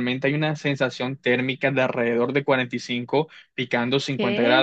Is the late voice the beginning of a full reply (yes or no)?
no